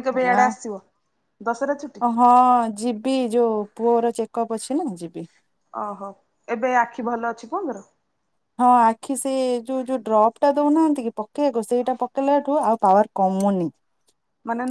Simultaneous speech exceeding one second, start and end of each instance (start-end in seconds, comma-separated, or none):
none